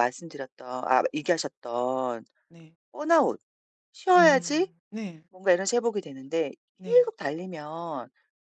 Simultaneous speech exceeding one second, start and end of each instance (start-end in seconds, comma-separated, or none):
none